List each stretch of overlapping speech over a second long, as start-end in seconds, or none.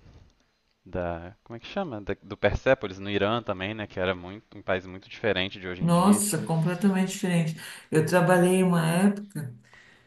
none